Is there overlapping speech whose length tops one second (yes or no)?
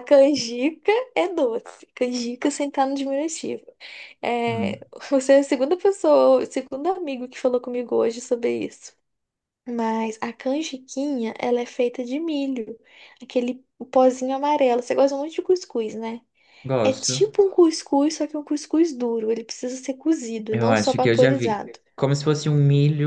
yes